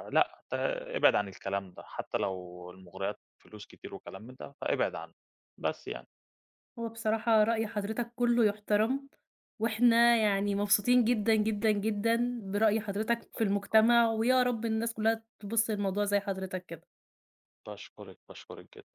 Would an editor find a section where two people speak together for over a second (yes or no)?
no